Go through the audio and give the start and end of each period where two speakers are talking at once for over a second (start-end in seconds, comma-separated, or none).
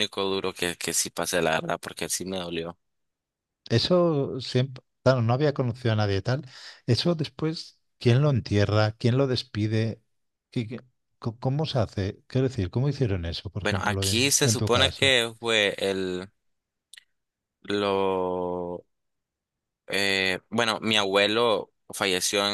13.6-15.2